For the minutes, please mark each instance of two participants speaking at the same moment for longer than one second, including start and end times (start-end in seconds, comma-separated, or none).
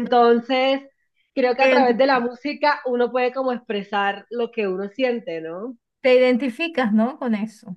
none